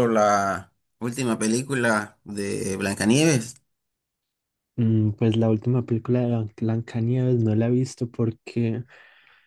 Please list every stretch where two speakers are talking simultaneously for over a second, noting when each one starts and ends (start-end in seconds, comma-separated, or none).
none